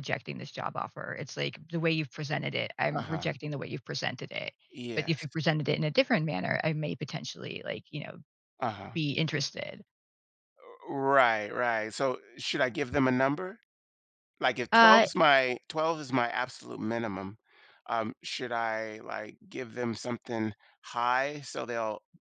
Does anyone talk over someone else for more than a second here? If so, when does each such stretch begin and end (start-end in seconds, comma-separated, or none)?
none